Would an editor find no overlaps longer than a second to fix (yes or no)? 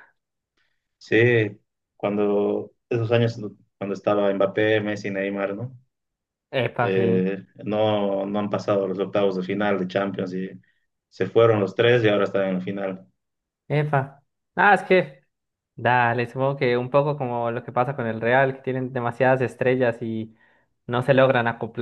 yes